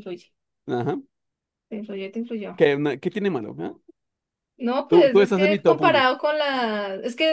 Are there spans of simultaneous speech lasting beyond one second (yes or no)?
yes